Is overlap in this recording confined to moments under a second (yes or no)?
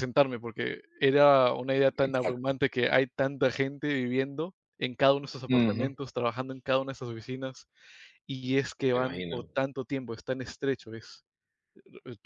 yes